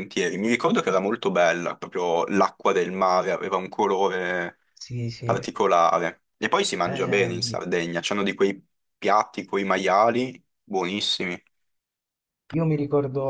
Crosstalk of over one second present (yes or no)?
no